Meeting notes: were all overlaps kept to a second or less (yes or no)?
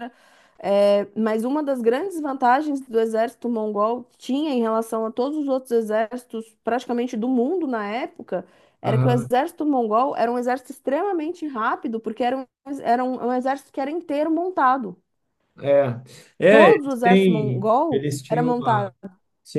no